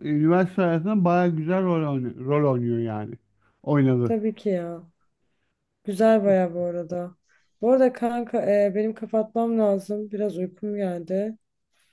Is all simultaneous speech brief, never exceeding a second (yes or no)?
yes